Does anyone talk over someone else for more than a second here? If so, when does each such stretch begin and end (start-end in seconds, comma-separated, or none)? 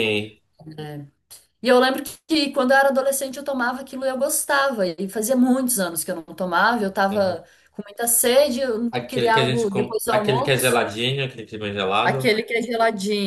8.9-10.8